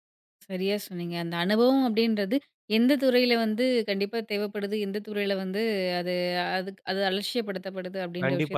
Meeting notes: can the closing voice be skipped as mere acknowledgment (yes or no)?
no